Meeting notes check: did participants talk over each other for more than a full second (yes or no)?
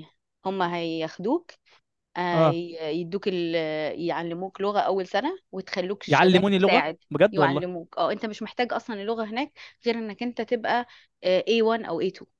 yes